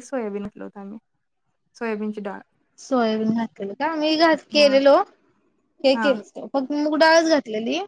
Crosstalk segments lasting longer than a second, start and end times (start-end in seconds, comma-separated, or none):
none